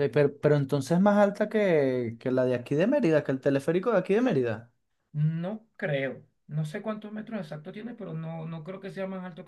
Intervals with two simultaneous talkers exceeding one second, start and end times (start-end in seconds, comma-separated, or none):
none